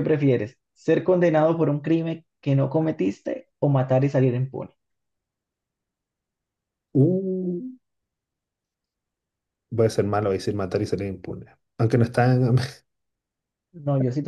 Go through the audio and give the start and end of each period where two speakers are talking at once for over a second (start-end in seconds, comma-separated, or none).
none